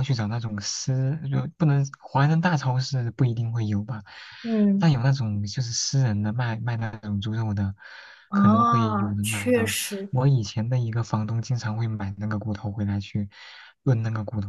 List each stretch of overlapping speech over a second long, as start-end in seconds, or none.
8.3-9.7